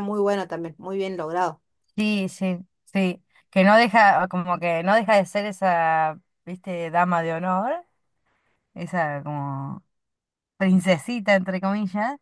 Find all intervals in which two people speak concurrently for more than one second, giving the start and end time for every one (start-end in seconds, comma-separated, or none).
none